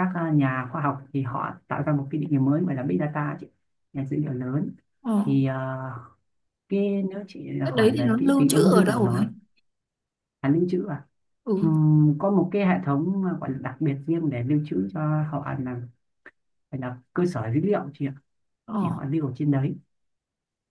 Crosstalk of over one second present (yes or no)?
yes